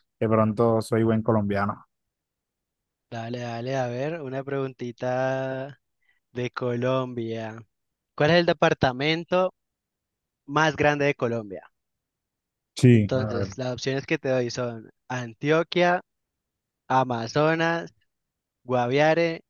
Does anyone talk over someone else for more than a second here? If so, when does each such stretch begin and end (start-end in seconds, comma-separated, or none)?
none